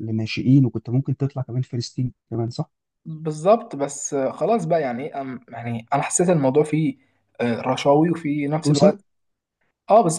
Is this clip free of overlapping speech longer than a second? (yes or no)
yes